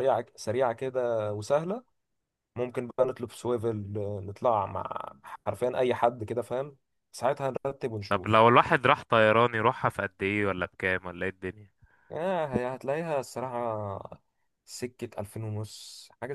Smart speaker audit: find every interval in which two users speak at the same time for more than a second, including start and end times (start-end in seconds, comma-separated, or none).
none